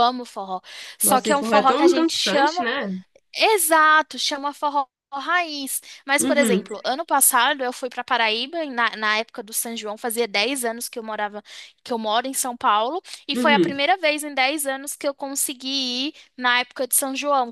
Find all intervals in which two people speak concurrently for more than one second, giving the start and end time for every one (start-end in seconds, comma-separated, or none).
1.0-2.7